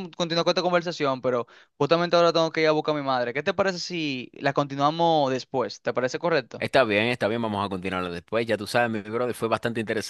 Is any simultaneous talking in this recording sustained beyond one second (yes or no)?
no